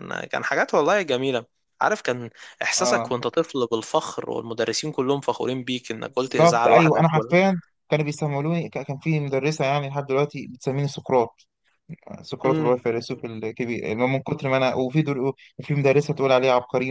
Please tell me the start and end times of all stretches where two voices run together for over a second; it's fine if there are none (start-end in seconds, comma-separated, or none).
6.1-7.3